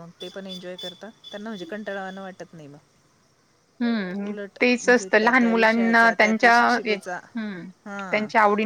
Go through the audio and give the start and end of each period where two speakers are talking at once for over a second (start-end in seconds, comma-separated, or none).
3.8-7.2